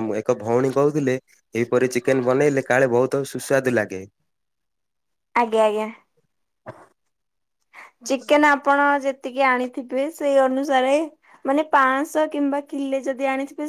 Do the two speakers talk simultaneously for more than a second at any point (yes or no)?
no